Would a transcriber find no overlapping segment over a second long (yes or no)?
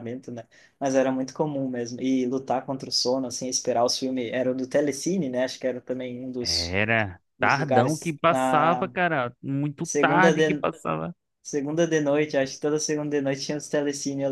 no